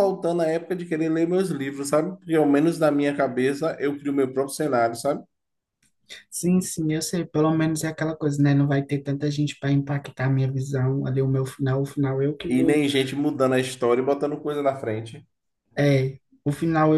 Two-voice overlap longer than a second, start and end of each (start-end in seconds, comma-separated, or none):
none